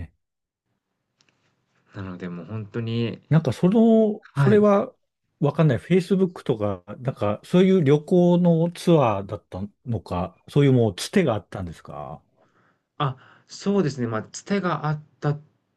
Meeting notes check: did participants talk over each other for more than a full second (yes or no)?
no